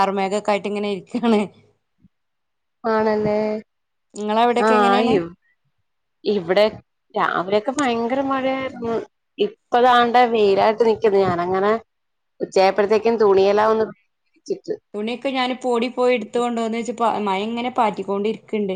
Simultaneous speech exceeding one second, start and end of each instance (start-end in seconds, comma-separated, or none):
none